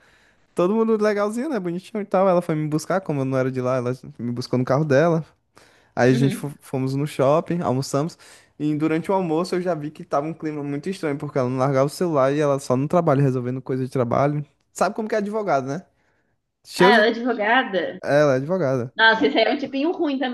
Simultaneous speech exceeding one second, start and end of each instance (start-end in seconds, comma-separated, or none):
none